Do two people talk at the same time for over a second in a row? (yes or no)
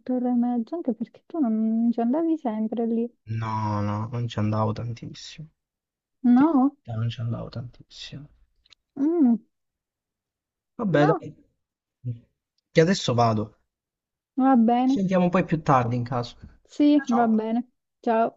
no